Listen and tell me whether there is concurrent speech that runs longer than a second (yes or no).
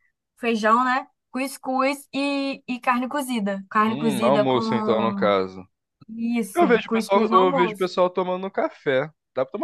yes